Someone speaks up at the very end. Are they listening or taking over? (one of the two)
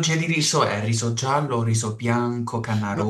taking over